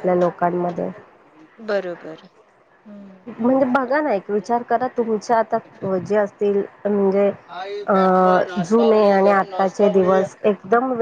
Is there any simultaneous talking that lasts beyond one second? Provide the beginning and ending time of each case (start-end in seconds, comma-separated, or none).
8.7-10.2